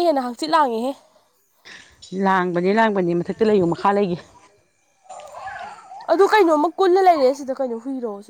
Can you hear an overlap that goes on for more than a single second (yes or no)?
no